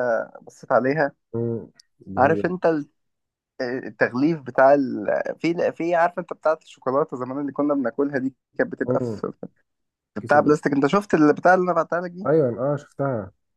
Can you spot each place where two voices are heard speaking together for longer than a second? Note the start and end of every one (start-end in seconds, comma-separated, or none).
none